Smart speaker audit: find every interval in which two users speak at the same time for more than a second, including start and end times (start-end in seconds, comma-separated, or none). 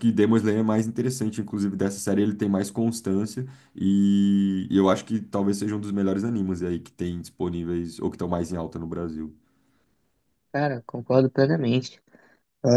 none